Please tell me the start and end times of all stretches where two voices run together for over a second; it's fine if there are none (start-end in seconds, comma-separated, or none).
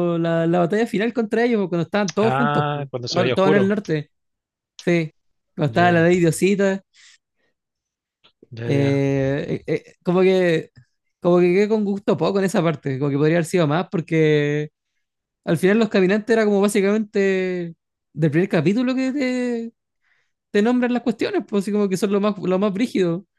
2.2-3.7